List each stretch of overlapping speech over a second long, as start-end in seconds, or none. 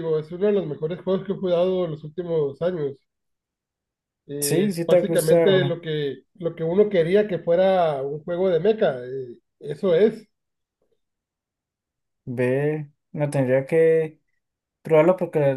4.4-5.8